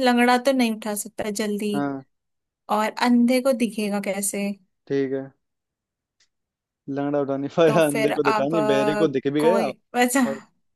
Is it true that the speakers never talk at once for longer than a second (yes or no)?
no